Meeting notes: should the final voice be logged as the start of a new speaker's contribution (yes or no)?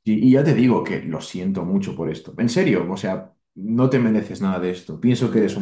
yes